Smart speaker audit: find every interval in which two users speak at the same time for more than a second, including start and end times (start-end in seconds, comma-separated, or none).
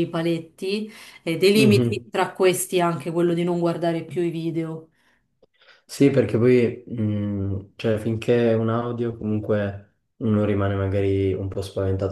none